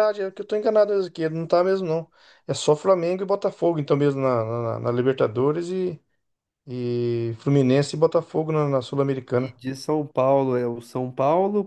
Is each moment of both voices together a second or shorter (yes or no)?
yes